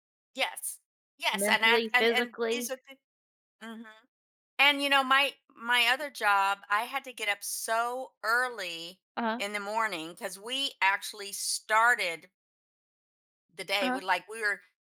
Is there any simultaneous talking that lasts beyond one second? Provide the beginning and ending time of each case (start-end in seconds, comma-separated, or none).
1.3-2.7